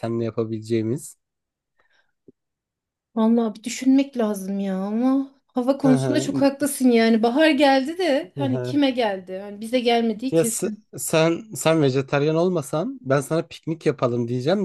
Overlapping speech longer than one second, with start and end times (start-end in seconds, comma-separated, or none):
none